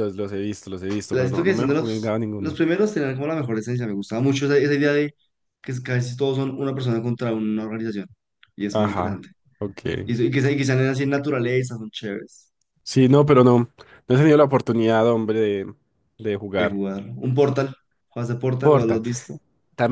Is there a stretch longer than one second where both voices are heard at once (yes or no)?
yes